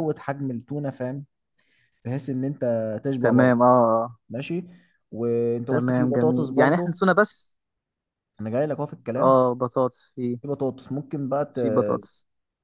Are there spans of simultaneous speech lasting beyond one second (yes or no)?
yes